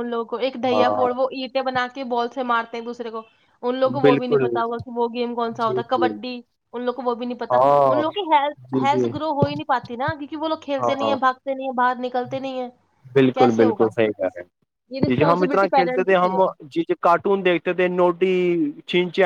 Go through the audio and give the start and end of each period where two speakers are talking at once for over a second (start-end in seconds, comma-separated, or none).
15.1-16.4